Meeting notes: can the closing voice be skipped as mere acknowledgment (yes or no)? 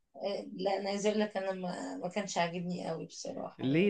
no